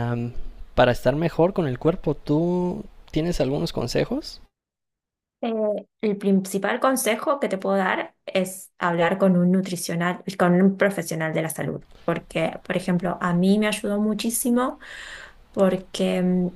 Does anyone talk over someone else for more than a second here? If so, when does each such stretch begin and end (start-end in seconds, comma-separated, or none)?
none